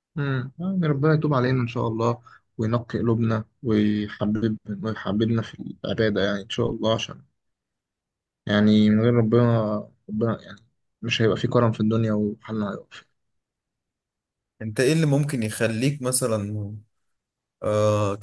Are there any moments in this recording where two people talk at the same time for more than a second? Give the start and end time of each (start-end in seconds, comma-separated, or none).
none